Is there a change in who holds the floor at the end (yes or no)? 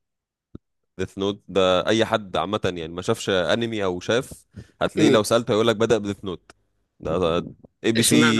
no